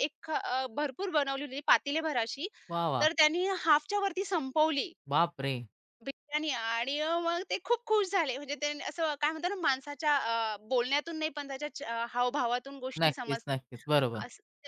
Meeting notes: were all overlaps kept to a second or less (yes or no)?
yes